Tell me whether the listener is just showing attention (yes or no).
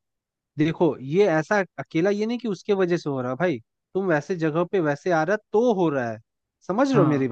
no